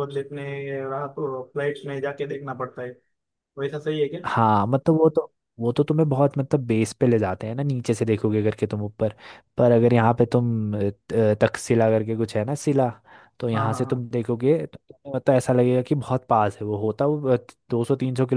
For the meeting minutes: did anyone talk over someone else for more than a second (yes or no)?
no